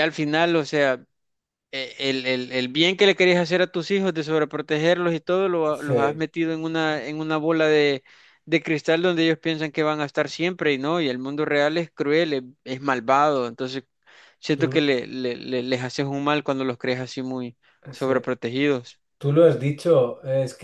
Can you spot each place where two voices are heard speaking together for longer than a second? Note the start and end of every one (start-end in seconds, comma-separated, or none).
none